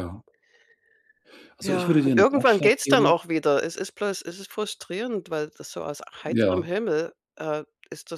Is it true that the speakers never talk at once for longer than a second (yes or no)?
no